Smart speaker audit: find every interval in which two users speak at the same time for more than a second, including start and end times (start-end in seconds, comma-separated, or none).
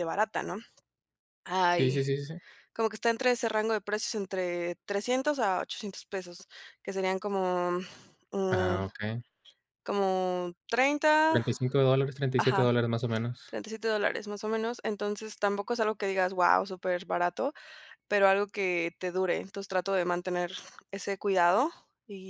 none